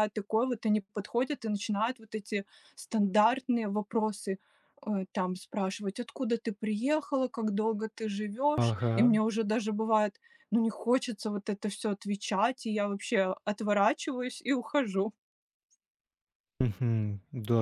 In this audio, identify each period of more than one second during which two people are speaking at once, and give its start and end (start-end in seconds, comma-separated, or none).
none